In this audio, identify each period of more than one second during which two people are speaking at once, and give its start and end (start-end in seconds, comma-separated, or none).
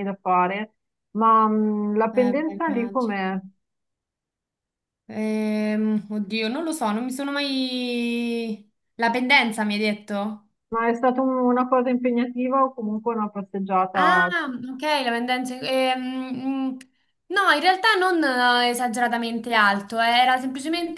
2.1-3.4